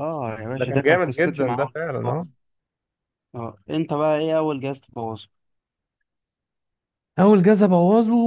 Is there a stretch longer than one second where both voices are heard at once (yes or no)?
yes